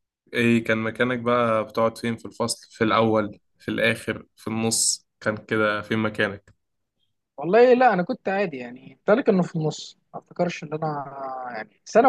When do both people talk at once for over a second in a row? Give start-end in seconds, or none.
none